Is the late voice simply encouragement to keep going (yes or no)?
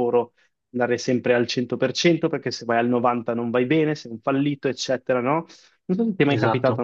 yes